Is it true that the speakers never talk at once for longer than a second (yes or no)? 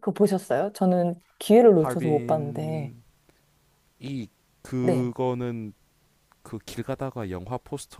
no